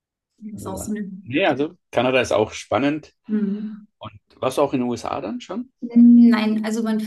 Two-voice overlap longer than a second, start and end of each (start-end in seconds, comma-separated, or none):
none